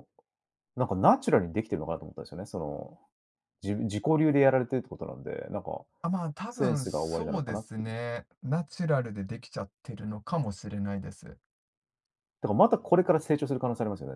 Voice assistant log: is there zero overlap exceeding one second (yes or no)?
no